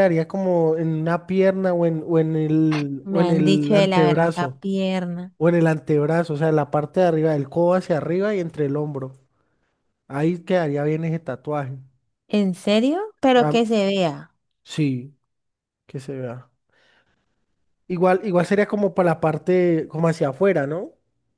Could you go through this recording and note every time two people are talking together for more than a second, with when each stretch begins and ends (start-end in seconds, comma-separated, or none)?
3.0-4.6